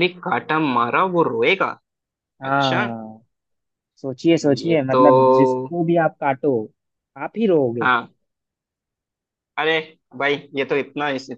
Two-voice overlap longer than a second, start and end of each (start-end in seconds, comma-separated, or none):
none